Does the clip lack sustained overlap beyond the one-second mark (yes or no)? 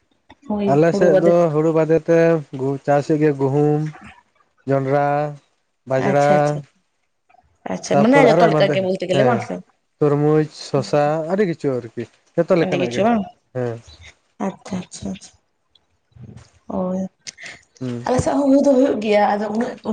no